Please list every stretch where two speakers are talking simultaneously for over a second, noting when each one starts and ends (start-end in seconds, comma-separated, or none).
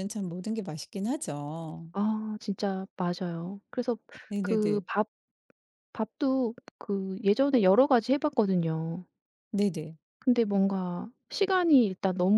none